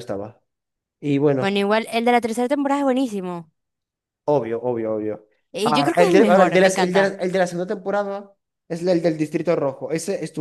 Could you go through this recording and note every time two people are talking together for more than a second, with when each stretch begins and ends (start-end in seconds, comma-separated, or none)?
5.6-7.2